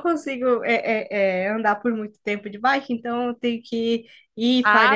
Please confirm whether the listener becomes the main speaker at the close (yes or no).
yes